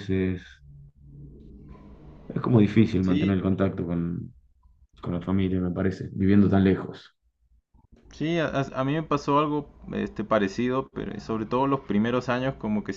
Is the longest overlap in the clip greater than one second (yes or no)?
no